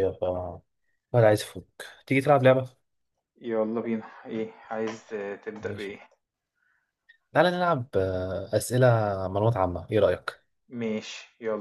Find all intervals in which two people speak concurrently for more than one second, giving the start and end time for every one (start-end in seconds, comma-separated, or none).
none